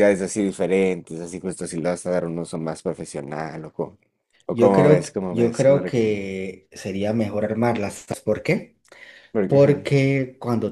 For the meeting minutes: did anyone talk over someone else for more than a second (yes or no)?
yes